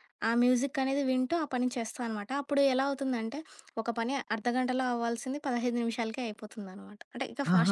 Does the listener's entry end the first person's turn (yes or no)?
yes